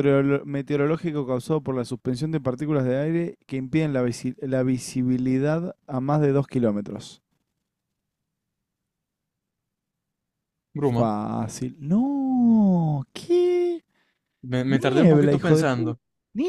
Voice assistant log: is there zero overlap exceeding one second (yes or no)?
no